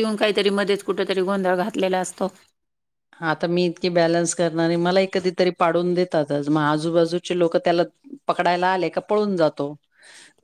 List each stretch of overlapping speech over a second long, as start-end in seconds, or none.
none